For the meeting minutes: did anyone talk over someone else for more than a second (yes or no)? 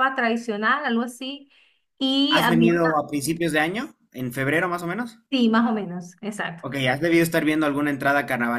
no